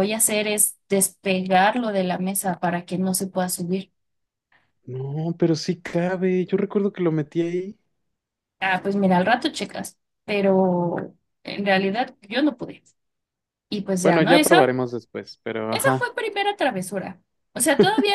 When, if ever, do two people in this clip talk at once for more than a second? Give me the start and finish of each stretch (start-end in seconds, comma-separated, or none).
none